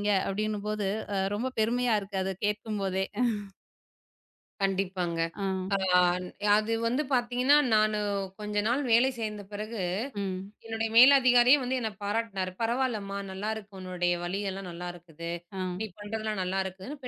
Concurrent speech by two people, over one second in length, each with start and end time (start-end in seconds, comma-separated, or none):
none